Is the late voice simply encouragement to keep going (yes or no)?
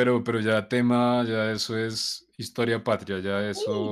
no